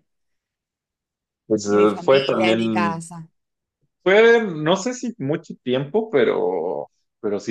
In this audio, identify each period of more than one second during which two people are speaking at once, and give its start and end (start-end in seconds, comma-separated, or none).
1.6-3.0